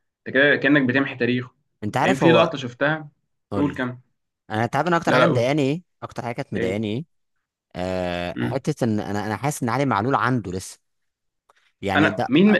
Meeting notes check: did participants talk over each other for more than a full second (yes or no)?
no